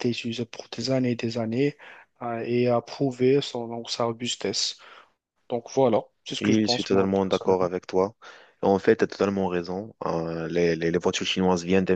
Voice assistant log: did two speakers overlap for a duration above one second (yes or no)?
yes